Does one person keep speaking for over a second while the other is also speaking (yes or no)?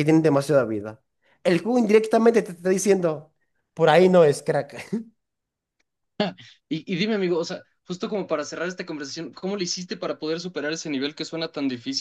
no